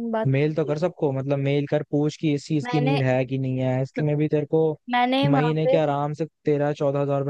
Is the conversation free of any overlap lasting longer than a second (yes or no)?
yes